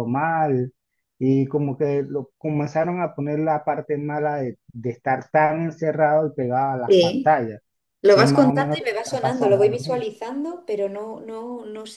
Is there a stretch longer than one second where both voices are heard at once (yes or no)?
yes